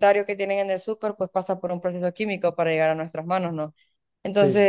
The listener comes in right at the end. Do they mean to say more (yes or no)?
no